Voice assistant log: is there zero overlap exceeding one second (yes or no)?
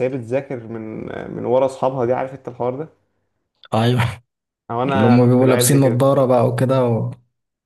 no